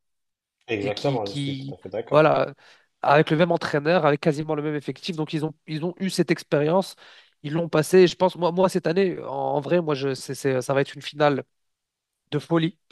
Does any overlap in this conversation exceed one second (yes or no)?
yes